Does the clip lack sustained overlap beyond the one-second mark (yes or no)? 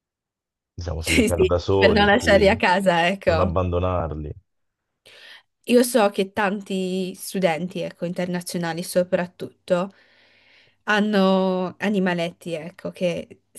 no